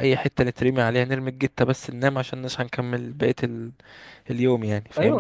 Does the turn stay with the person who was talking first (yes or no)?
no